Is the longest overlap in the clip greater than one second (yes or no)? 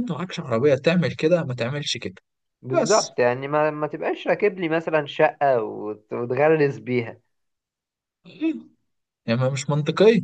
no